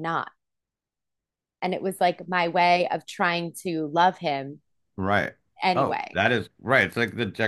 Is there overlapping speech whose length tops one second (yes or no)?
no